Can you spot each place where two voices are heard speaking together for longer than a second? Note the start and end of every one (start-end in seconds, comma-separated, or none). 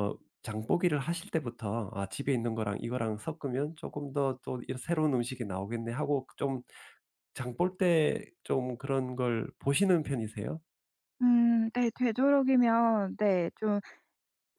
none